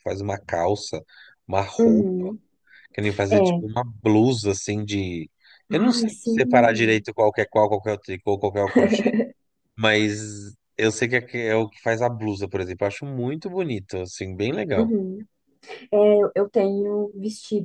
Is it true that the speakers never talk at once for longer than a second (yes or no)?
no